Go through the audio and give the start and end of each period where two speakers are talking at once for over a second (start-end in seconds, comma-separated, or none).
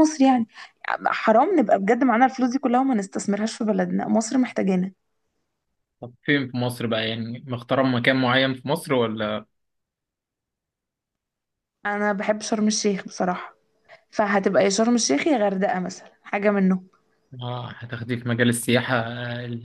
none